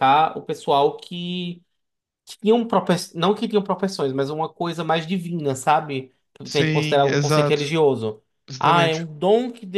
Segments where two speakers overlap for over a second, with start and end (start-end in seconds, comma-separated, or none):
6.5-7.7